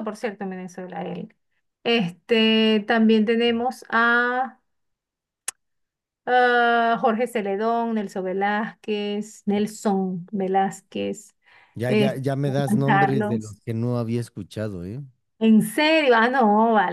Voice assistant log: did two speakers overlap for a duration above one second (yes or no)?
yes